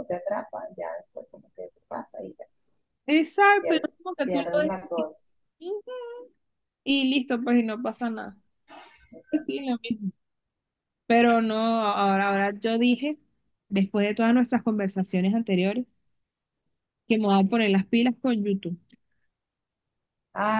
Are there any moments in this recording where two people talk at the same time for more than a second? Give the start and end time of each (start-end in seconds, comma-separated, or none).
3.6-5.1